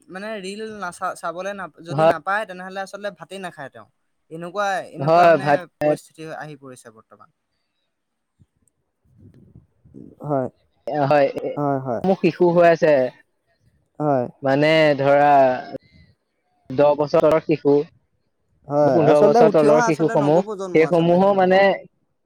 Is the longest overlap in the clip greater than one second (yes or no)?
yes